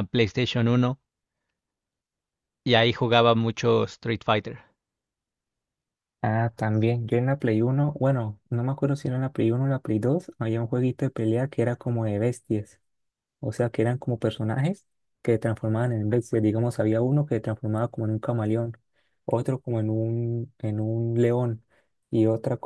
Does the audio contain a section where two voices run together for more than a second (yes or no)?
no